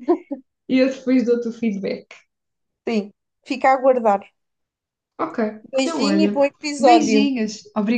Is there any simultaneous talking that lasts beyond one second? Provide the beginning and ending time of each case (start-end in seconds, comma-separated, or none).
5.8-7.3